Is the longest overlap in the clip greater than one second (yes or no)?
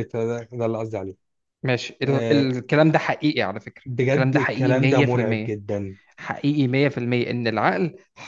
yes